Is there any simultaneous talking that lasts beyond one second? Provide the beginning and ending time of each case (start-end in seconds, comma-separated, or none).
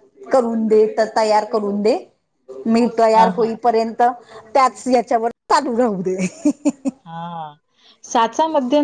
none